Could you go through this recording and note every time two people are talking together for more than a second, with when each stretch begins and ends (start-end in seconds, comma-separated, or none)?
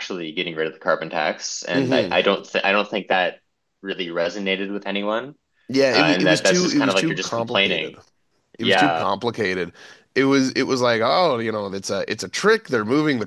5.9-8.0